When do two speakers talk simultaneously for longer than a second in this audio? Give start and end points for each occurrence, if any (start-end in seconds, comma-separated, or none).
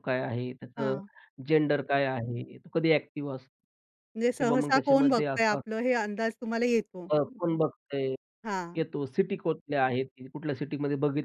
4.4-5.7